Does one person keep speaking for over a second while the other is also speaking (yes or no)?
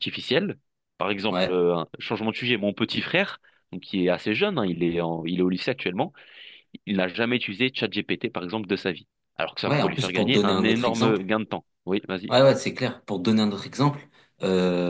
yes